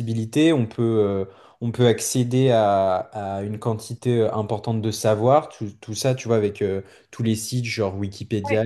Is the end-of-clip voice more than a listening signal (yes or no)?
no